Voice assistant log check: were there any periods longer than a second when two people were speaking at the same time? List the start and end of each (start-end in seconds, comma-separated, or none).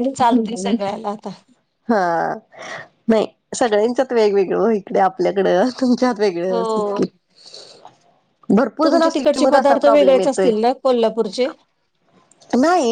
8.8-10.5